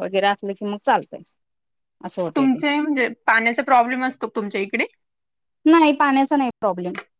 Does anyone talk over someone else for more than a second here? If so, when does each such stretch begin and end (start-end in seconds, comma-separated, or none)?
none